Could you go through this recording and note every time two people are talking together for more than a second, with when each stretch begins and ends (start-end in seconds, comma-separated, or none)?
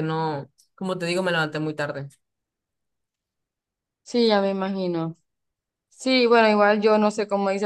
none